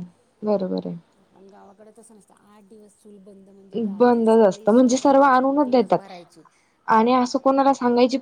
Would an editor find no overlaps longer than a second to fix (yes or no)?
no